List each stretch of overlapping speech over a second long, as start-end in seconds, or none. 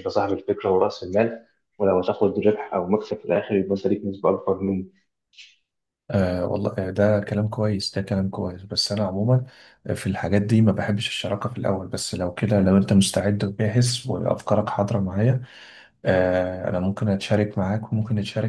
none